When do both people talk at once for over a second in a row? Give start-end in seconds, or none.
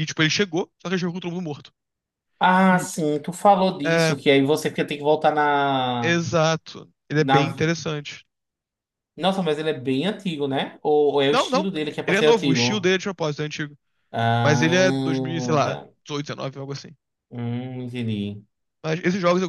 11.3-12.9, 14.4-15.9